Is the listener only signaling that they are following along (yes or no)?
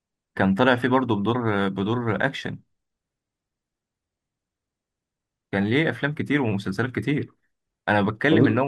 yes